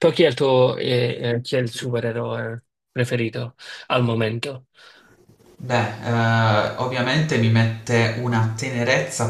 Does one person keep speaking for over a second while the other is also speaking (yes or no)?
no